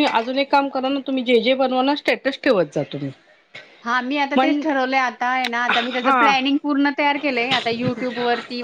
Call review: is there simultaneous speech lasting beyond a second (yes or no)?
no